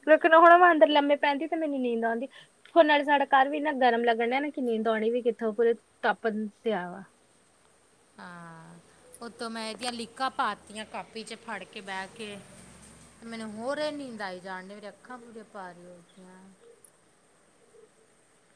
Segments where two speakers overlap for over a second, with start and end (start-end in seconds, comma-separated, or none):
none